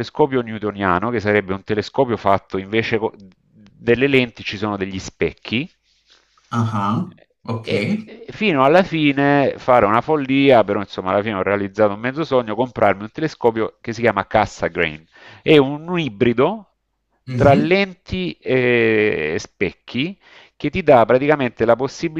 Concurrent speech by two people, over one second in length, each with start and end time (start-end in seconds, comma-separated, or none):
none